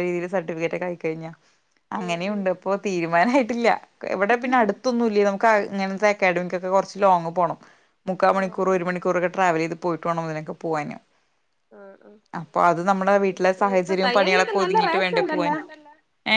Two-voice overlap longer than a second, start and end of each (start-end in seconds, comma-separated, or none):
13.4-15.5